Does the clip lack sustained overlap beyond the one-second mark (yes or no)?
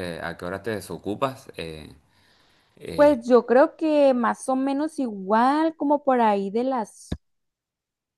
yes